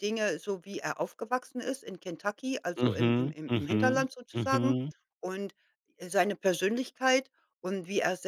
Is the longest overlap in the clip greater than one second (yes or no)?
yes